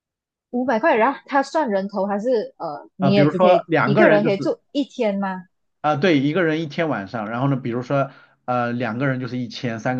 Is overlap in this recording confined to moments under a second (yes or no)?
no